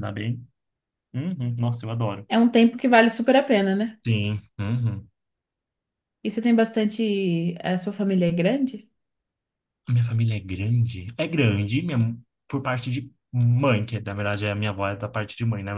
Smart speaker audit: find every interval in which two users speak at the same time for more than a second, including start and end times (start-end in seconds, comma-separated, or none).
none